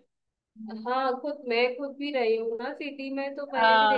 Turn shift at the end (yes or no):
no